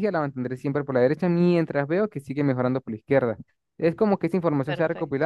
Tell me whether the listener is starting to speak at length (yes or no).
yes